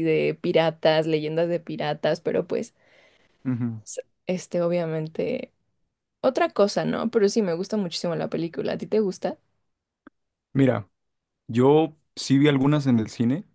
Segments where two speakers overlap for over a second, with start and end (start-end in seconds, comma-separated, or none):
none